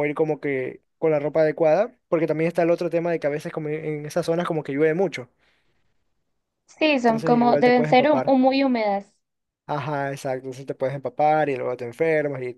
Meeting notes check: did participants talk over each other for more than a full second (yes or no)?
yes